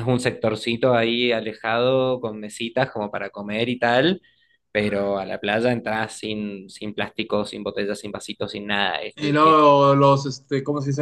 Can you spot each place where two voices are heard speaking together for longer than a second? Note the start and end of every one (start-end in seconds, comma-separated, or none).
none